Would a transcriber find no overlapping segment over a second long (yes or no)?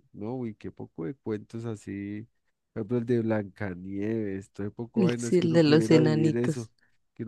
no